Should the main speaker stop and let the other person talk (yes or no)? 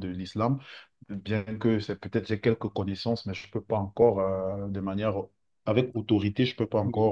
no